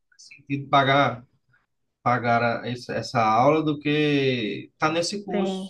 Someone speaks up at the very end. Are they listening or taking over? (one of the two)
taking over